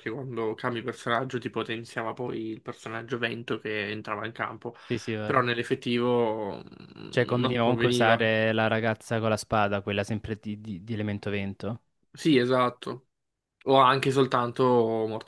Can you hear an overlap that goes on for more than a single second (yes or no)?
yes